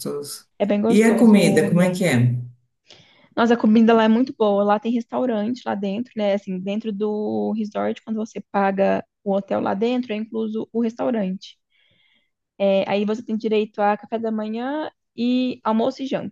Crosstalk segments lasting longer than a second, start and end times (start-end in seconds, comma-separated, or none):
0.9-2.2